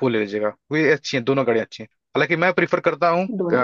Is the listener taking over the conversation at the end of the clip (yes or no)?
no